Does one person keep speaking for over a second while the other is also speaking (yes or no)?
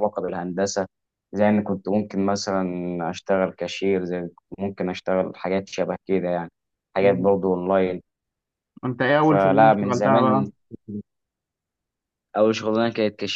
yes